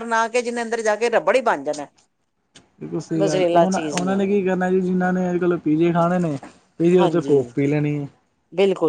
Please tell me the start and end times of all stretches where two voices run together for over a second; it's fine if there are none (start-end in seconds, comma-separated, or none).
none